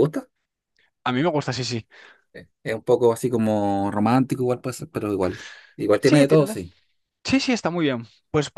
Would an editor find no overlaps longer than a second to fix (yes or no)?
yes